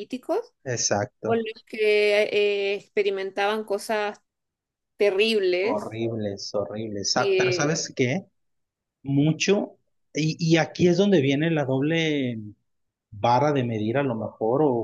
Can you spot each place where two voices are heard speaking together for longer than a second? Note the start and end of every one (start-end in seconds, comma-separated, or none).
none